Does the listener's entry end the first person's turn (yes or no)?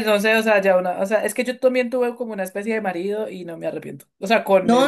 yes